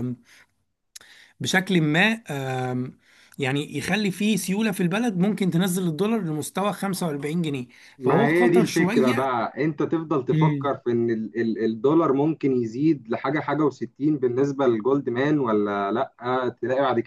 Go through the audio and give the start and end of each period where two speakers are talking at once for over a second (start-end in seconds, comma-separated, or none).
8.0-9.3